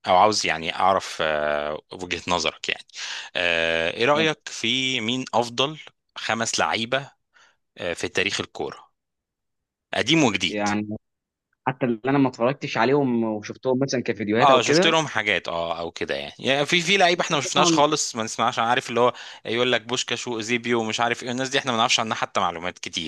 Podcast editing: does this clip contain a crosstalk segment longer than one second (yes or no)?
no